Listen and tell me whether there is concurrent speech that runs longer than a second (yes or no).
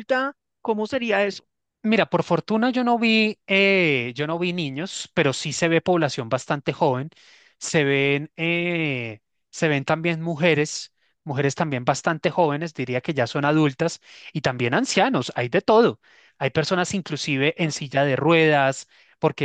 no